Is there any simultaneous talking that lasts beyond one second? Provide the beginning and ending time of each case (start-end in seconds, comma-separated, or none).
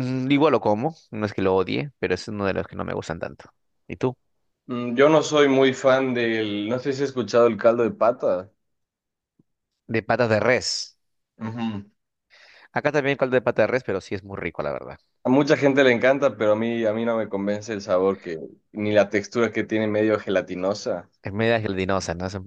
none